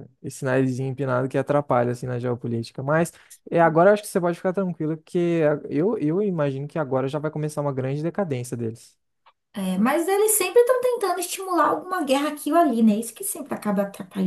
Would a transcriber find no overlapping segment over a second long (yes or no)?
yes